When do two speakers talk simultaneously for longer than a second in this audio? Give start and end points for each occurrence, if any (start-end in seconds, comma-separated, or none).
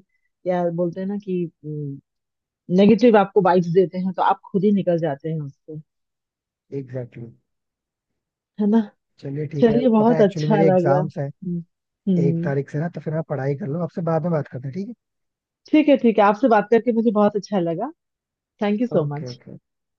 9.6-11.3